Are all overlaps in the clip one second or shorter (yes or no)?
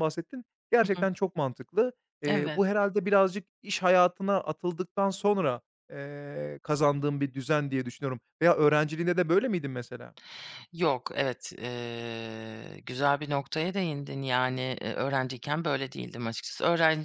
yes